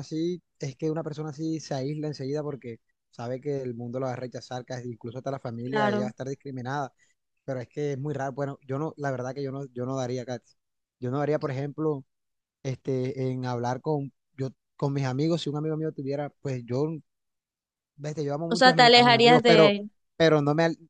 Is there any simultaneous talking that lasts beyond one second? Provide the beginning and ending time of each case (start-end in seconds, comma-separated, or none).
18.5-19.8